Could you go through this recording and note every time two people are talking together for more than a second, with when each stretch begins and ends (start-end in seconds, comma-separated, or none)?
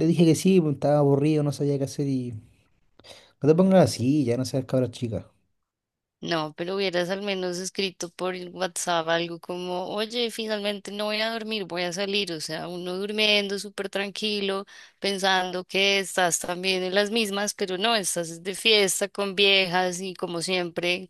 none